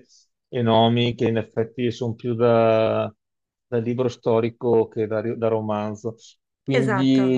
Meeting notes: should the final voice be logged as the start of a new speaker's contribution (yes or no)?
yes